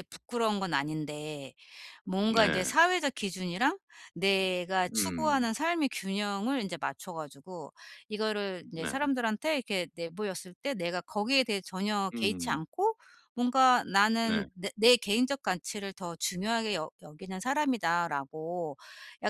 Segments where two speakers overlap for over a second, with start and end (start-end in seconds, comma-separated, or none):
none